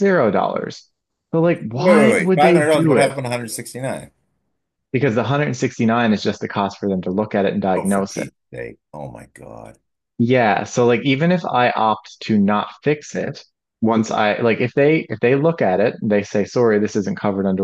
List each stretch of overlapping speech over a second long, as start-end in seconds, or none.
1.7-3.1